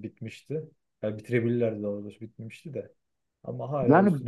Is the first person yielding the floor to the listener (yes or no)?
yes